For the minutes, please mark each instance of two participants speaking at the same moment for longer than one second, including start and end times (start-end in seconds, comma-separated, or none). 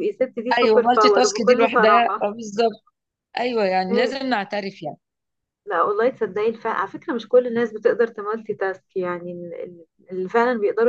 0.6-2.3